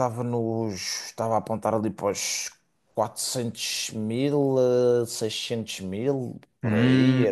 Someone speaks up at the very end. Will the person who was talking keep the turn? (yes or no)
no